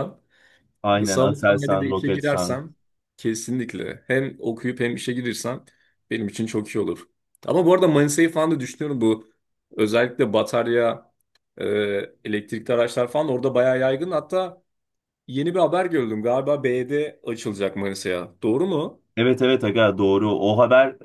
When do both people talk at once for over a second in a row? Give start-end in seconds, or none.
1.0-2.6